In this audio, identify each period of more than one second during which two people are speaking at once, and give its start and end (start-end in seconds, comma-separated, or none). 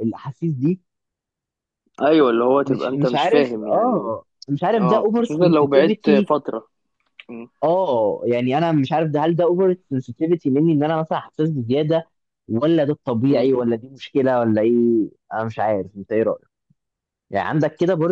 2.6-4.1, 4.8-6.3